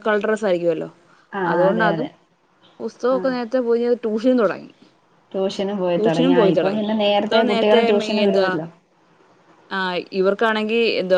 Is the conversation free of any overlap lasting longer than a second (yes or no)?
no